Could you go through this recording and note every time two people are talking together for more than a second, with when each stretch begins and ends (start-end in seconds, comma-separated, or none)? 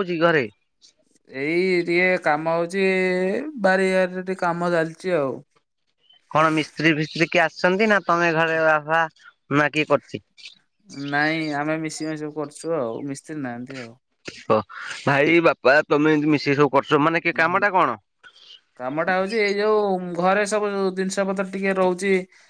none